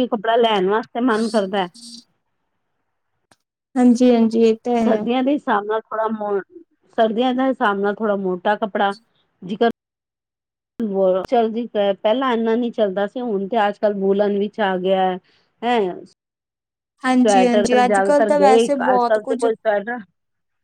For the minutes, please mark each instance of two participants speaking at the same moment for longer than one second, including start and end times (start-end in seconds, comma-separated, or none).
17.2-19.4